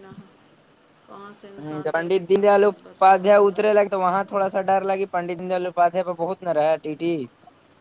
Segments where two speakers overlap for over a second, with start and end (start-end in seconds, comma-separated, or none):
1.6-3.6